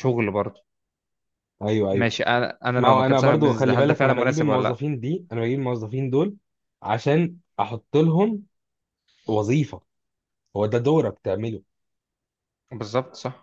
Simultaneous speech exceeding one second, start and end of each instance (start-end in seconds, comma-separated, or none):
2.8-4.8